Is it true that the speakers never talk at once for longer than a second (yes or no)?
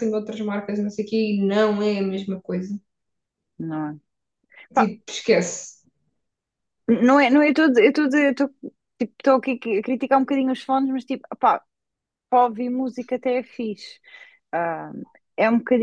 yes